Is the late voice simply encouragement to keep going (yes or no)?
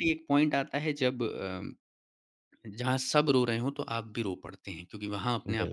yes